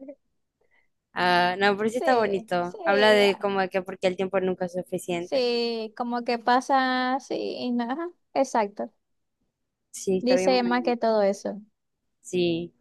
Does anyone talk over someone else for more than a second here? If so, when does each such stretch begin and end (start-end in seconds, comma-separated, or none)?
1.9-3.5